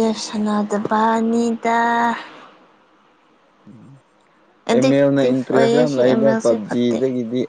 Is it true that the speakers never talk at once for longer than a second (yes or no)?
no